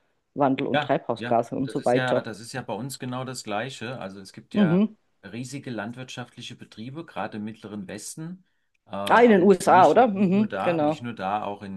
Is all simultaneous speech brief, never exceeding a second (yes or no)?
no